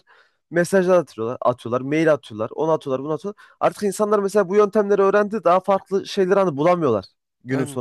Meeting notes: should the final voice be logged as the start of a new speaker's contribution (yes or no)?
no